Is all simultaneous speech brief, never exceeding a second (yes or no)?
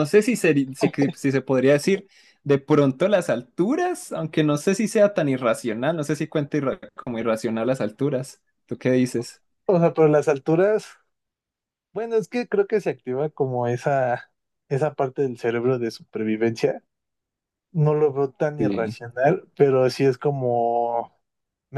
yes